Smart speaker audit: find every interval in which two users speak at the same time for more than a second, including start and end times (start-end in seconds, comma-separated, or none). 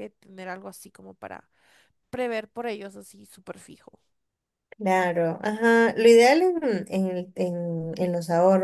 none